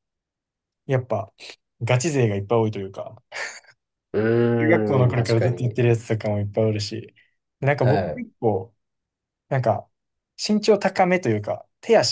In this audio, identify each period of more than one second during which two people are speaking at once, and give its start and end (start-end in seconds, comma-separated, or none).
4.6-5.8